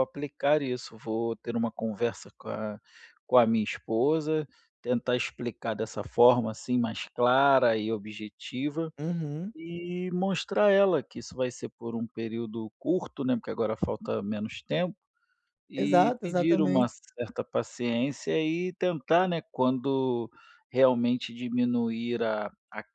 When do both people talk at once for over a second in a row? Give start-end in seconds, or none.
15.8-16.9